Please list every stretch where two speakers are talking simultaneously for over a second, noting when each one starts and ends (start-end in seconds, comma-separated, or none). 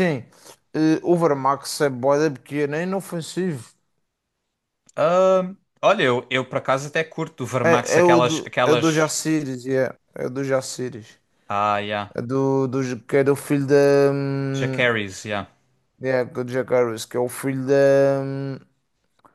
7.6-9.1